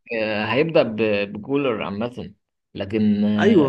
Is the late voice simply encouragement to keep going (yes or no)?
yes